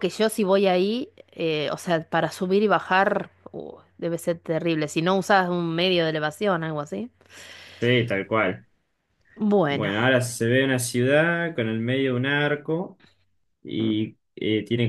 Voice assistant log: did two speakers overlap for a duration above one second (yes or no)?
no